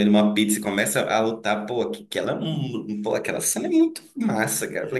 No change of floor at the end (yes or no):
yes